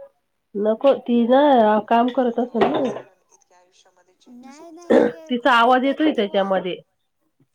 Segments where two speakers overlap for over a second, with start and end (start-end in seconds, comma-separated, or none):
4.9-6.5